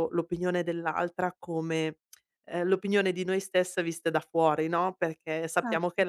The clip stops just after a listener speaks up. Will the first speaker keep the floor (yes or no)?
yes